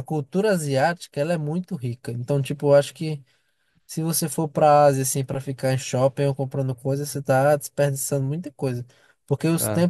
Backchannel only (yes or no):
yes